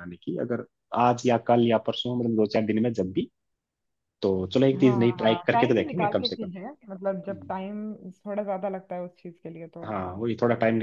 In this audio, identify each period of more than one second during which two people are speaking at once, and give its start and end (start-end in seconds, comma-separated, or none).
4.8-6.5